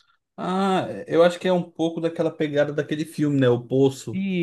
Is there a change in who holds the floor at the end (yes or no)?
yes